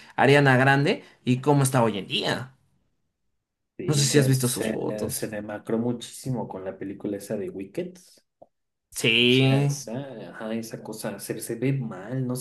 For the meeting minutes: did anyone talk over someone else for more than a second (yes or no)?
yes